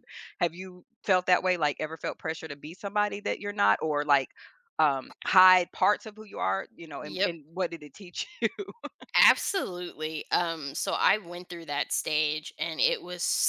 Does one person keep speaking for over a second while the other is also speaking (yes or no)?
no